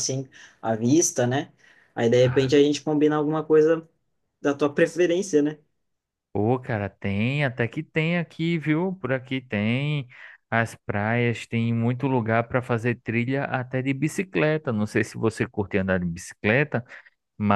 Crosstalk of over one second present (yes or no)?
no